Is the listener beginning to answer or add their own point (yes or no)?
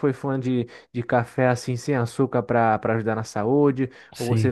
no